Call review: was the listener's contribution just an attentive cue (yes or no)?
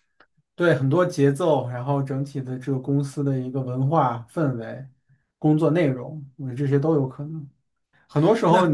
yes